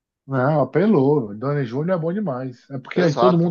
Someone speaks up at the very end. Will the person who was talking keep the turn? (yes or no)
yes